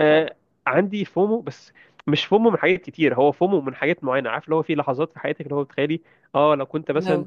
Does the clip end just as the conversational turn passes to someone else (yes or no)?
no